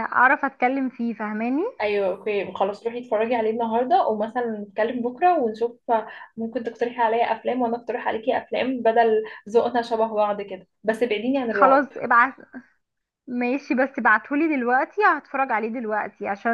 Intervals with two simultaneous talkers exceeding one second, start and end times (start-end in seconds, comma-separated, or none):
none